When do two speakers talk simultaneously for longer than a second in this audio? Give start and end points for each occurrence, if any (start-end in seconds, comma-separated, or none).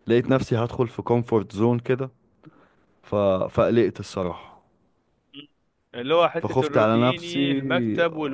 6.4-7.6